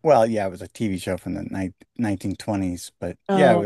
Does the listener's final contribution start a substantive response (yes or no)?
no